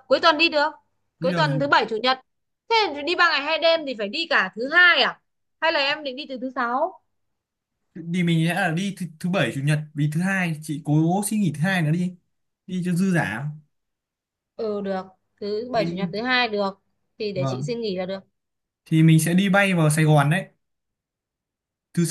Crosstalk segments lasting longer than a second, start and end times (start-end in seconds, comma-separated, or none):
none